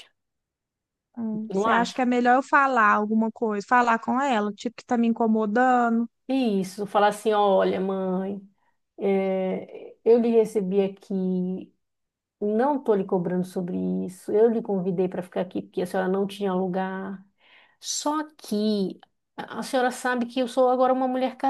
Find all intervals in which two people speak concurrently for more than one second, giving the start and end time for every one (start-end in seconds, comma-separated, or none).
none